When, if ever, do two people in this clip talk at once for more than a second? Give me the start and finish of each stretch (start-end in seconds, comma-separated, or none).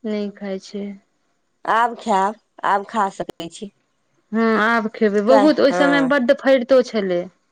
none